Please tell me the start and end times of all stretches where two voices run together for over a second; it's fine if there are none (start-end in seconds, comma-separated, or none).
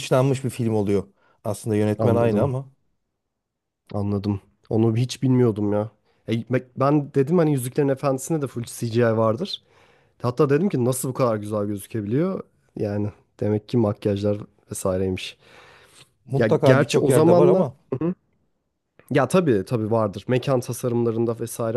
16.4-17.8